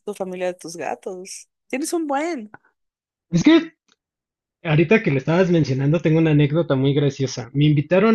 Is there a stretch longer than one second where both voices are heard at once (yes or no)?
no